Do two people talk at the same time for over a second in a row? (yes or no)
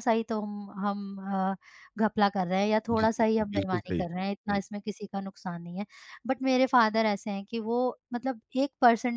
yes